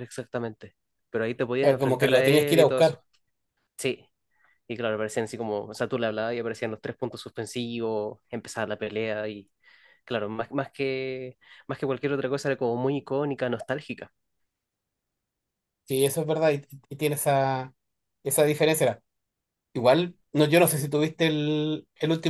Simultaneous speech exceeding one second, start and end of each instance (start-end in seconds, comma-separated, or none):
1.6-3.0